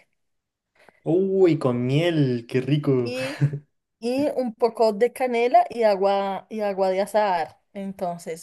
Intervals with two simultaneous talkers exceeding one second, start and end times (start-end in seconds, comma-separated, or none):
none